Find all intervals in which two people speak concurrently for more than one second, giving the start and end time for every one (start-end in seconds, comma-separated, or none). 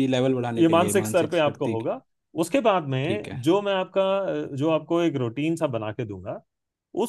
0.6-1.9